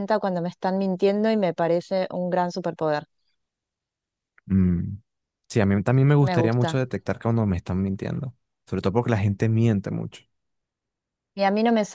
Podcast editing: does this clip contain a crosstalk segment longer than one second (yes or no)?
no